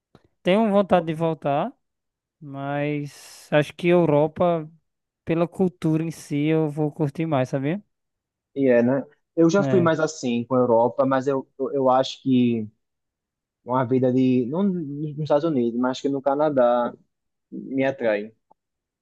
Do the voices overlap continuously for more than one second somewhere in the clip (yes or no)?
no